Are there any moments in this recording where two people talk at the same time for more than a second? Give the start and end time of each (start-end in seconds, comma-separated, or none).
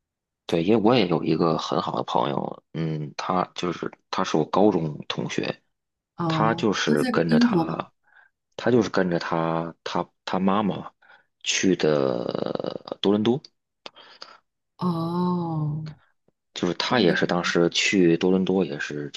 6.3-7.8